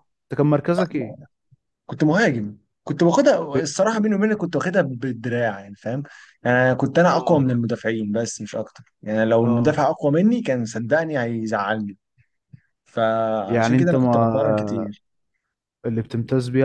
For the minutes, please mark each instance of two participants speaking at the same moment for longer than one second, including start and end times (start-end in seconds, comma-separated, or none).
13.5-14.9